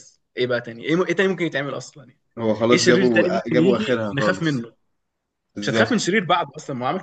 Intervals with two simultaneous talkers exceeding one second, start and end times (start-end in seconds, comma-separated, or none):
2.7-4.6